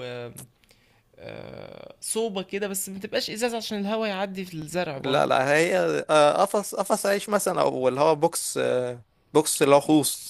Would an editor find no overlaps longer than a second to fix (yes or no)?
yes